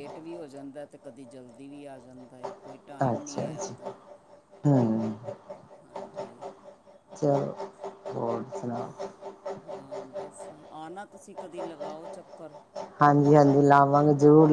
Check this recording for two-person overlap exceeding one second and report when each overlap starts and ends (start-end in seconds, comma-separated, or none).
none